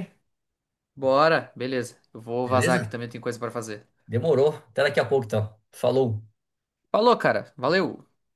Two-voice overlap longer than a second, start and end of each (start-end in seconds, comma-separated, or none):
none